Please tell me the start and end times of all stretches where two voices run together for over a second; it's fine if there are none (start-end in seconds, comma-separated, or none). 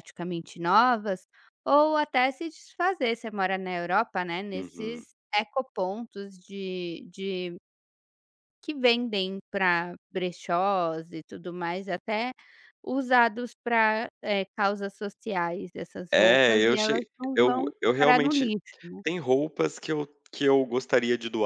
16.1-18.5